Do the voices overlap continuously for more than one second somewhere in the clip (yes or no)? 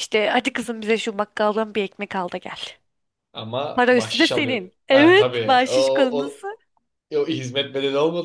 yes